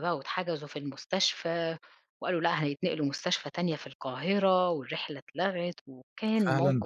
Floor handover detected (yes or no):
yes